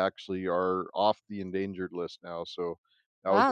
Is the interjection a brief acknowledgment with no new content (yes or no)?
no